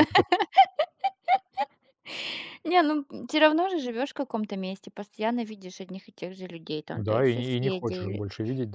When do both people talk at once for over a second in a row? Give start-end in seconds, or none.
7.0-8.2